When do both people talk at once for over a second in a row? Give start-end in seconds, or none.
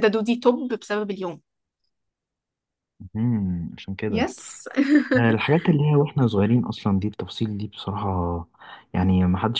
none